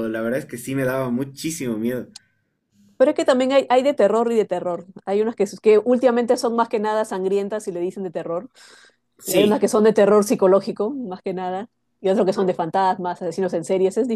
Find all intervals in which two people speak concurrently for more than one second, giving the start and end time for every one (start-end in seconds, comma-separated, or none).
none